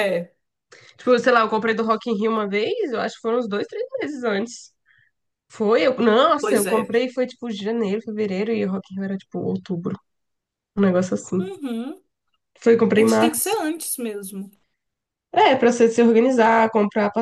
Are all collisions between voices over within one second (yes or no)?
yes